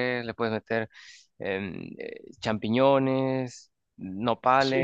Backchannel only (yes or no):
no